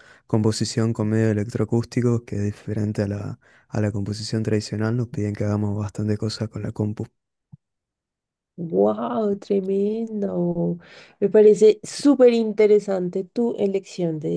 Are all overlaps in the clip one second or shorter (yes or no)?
yes